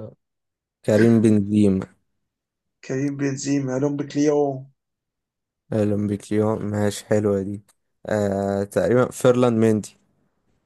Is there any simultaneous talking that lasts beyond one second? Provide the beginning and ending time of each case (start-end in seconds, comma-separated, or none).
none